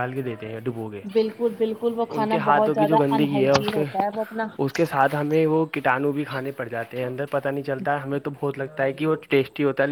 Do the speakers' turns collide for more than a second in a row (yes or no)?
yes